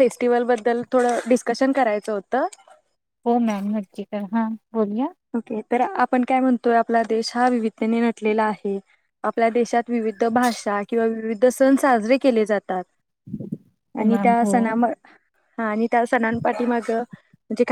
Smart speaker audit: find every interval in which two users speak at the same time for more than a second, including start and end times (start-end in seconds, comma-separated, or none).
none